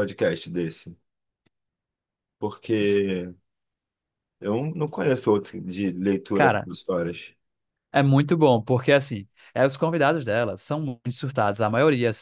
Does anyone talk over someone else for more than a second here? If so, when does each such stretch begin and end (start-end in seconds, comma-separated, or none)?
none